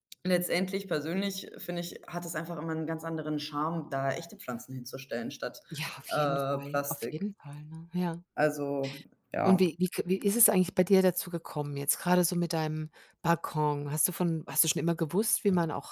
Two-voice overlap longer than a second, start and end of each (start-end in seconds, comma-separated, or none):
6.1-7.3